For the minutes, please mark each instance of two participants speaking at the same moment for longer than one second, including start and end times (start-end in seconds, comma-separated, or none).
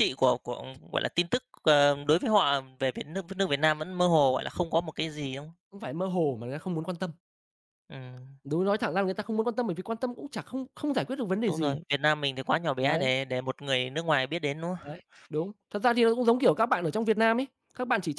none